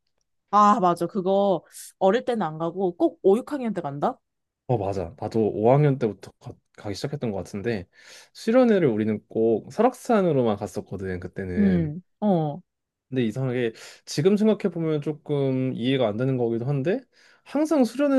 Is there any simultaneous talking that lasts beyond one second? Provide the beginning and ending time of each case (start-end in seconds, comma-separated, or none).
none